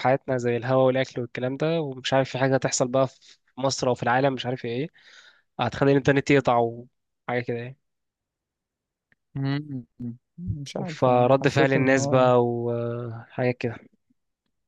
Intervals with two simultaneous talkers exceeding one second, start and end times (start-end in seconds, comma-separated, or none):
10.9-12.3